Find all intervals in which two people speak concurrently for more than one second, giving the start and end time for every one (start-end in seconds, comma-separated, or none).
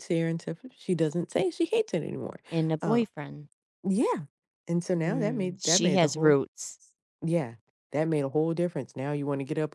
5.0-6.4